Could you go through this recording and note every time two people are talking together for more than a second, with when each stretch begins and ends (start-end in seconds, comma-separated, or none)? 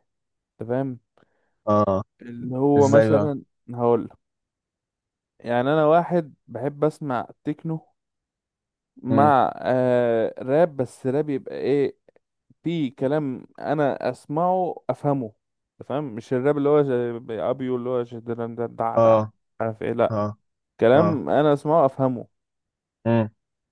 none